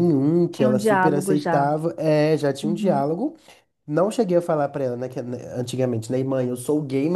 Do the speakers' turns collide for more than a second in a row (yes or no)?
yes